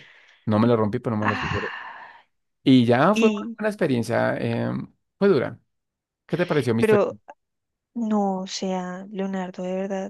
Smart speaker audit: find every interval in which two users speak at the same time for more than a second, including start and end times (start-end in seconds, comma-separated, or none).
none